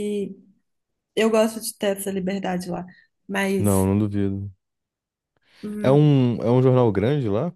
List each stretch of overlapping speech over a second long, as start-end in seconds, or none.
none